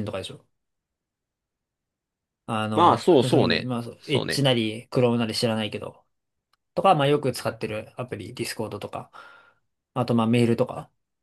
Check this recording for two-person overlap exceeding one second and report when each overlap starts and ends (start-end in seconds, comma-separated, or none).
2.7-4.4